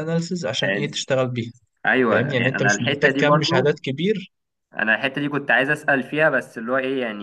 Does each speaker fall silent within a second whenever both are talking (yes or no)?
no